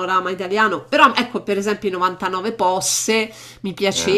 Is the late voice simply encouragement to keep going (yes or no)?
yes